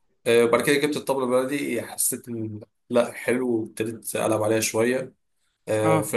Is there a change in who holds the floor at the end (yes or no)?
no